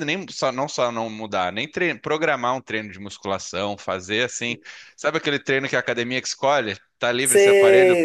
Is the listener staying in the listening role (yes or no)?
no